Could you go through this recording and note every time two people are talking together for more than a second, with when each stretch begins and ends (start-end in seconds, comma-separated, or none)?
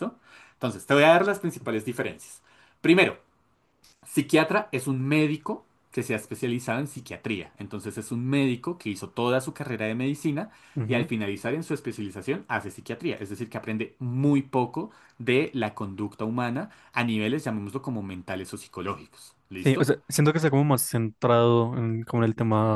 none